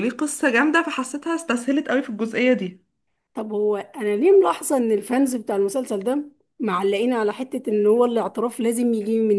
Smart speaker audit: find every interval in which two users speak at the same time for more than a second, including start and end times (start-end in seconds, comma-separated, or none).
none